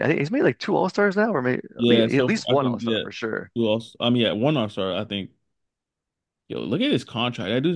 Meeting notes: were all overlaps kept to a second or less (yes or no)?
no